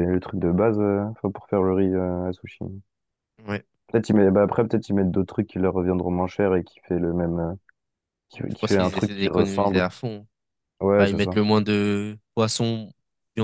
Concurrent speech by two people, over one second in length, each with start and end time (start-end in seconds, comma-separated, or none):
8.5-9.8